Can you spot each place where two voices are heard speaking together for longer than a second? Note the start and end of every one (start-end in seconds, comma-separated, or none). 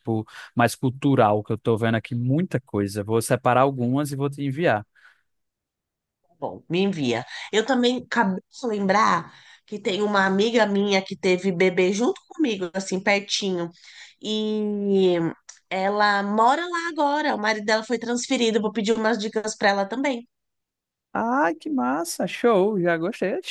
none